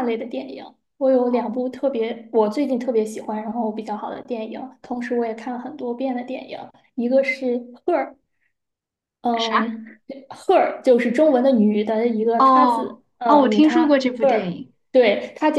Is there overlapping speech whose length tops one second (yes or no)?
yes